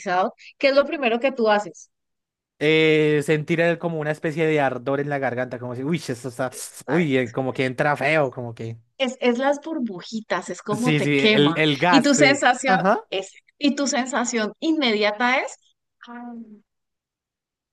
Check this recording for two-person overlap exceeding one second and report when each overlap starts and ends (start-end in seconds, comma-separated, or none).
10.7-13.0